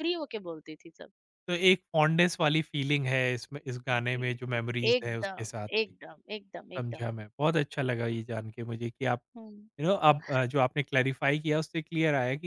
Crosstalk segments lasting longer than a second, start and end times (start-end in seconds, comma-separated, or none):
3.9-5.9